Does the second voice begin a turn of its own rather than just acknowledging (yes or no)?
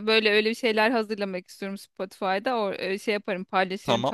yes